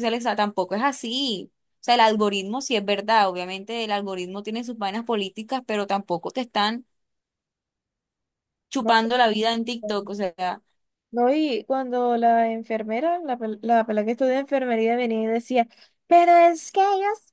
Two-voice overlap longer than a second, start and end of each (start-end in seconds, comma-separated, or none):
none